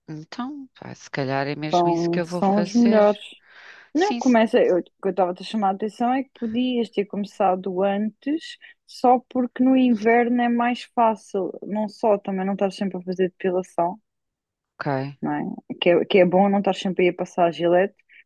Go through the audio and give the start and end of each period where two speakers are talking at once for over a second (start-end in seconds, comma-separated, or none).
1.7-3.0